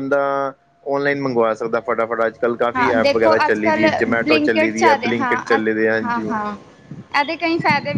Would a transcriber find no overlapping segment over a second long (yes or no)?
no